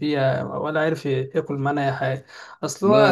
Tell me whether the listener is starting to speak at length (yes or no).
no